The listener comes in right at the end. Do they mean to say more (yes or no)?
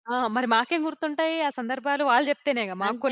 no